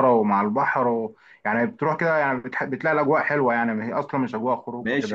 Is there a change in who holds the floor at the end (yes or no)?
yes